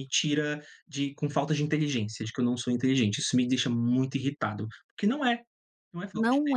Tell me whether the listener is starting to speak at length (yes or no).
yes